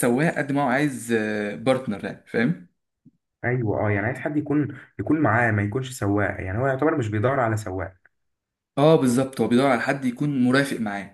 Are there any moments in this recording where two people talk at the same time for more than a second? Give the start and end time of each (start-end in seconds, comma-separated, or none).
none